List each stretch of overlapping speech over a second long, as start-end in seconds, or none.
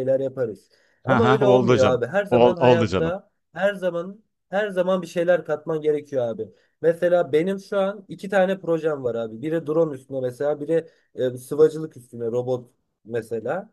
1.1-3.1